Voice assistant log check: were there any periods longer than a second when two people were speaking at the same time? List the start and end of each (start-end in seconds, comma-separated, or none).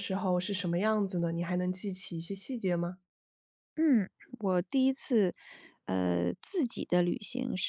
none